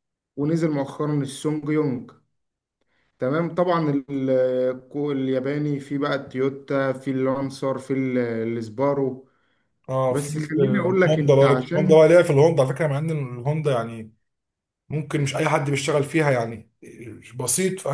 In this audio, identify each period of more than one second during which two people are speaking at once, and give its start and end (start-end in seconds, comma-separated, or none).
10.1-12.1